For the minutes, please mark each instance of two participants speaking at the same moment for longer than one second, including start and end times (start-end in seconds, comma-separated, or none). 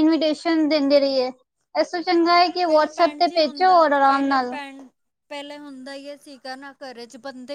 2.1-4.5